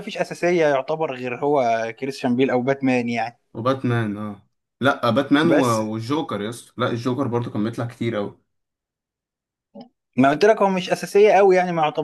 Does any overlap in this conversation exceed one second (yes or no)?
no